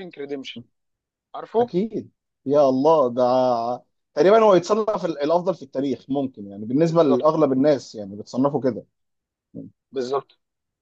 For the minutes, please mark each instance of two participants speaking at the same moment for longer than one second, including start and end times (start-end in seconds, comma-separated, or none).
none